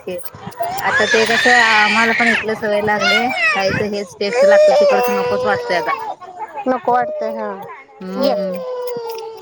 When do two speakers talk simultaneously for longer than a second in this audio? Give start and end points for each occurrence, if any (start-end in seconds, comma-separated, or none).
none